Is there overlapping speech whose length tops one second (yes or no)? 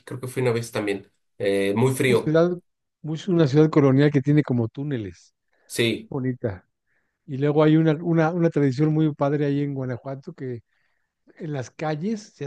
no